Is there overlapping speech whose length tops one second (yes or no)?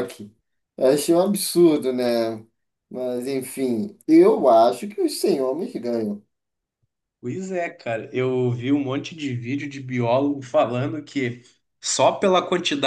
no